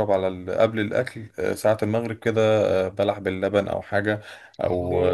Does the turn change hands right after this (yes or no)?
no